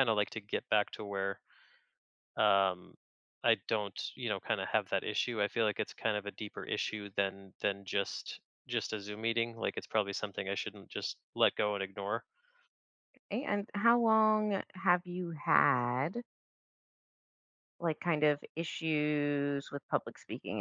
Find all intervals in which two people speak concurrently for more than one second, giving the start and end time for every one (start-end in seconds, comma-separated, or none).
none